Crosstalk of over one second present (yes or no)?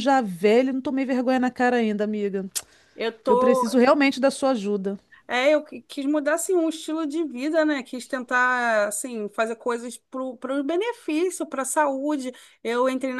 no